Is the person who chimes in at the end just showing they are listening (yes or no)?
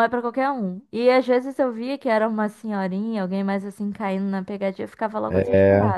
yes